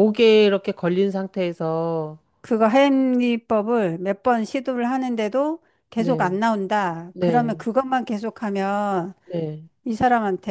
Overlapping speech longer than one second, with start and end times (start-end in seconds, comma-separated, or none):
none